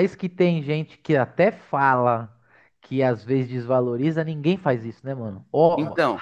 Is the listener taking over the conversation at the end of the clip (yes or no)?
no